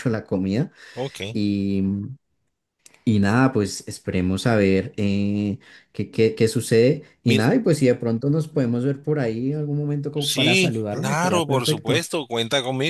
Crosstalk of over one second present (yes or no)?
yes